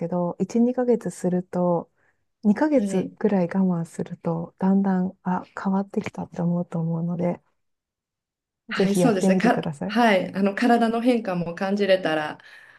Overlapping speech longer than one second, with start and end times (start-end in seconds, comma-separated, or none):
8.7-10.0